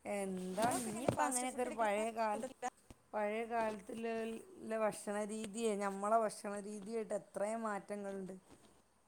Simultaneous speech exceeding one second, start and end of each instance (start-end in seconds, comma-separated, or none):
0.6-2.5